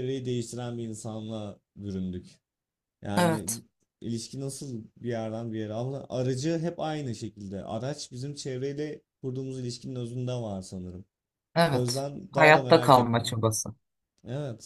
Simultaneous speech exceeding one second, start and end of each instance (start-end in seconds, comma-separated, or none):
11.7-13.3